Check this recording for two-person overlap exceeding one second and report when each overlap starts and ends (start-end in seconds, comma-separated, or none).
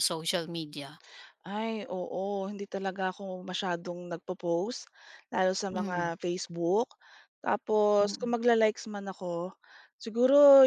none